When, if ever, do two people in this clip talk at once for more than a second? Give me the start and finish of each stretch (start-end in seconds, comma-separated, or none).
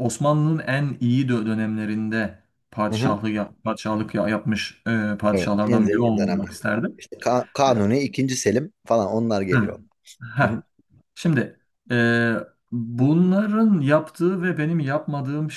5.3-7.0